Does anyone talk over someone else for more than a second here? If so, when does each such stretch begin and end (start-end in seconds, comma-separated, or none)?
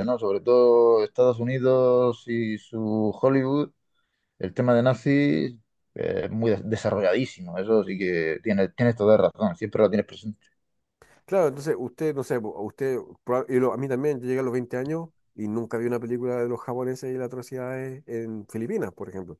none